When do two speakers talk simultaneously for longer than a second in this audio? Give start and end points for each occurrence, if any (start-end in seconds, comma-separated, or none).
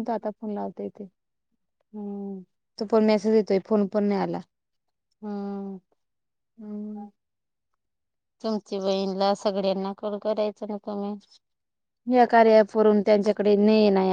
none